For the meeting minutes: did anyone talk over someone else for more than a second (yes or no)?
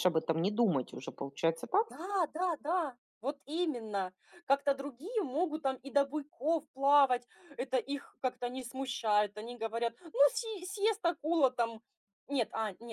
no